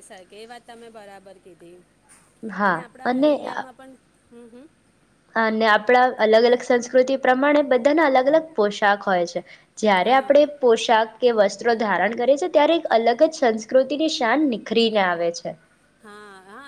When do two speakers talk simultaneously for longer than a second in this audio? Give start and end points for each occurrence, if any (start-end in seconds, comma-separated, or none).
none